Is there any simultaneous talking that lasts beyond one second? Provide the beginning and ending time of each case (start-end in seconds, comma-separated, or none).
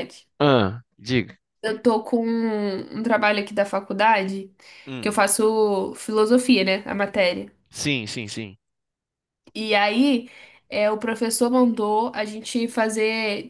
none